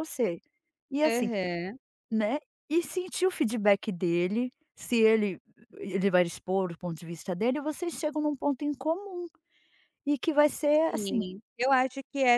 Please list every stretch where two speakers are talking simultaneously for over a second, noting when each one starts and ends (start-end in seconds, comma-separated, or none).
none